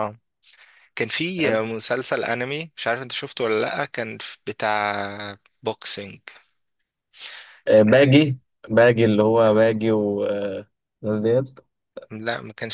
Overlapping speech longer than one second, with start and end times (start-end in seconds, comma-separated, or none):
none